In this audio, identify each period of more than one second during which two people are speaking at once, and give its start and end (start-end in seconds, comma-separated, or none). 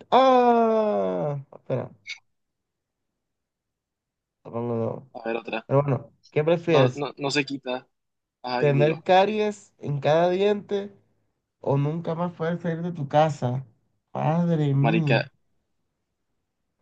none